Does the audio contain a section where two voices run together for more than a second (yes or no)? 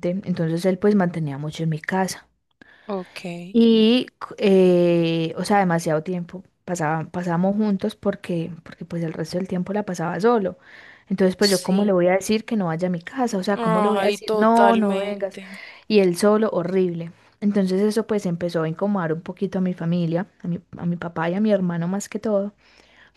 yes